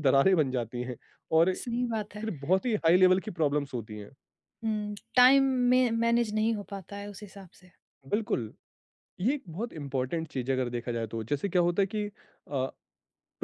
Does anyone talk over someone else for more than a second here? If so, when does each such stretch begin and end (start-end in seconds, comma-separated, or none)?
none